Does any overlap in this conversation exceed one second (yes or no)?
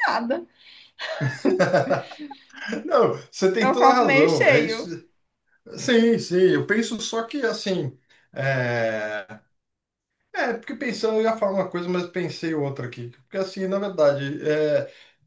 yes